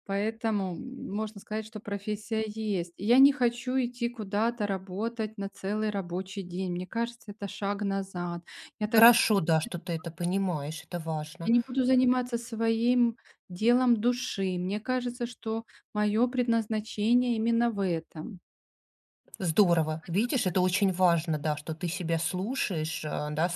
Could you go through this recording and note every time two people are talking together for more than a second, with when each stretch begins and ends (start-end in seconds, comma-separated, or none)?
none